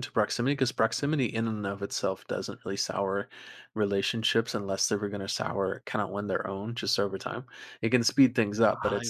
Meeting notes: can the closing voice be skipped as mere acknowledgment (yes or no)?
yes